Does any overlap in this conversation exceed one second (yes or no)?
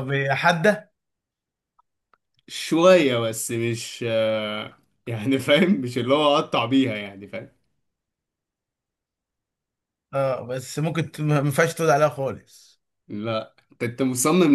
no